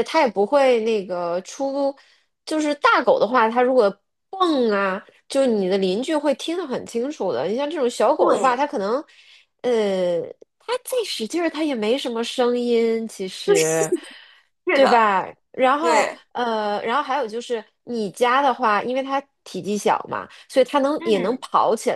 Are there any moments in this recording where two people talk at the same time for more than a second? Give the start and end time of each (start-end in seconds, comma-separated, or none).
none